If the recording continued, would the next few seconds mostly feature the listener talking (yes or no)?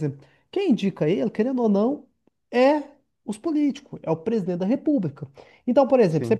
no